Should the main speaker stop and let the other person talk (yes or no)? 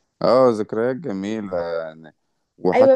yes